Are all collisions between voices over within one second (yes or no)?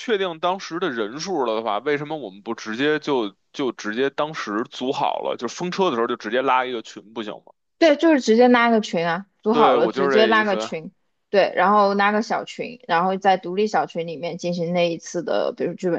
no